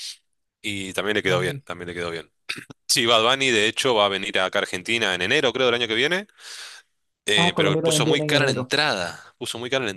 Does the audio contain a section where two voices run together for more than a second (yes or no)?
yes